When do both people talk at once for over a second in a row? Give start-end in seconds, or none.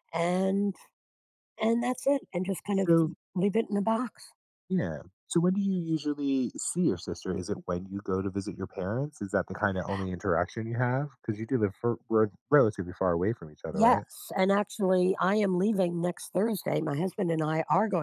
none